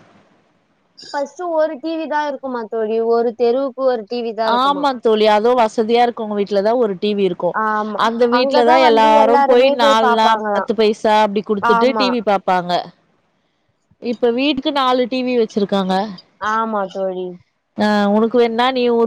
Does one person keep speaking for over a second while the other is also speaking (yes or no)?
yes